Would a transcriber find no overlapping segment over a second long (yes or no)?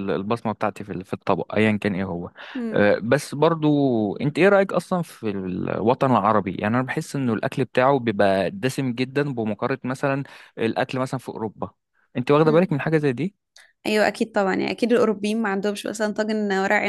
yes